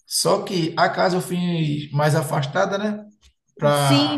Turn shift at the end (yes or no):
yes